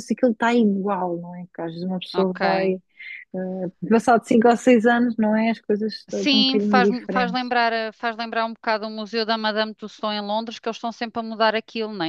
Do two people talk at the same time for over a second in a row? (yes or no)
yes